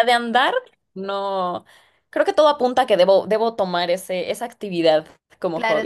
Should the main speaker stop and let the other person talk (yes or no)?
yes